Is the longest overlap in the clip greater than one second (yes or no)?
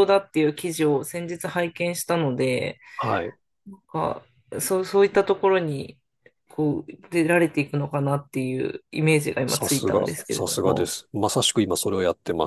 yes